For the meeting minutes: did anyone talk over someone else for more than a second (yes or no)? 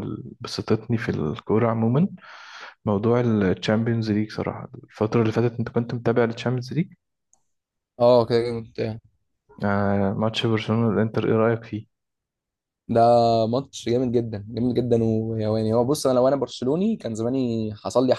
no